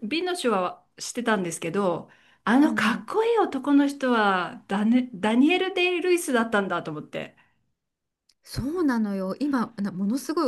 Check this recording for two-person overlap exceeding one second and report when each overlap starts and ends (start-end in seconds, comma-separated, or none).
none